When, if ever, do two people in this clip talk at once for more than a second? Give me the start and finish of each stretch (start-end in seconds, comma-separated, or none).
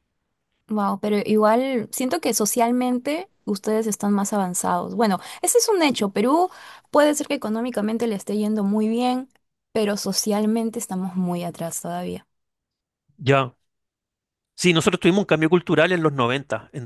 none